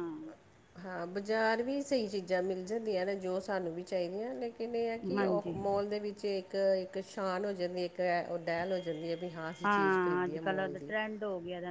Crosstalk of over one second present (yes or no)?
yes